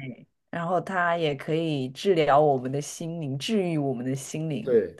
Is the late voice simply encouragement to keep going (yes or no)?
no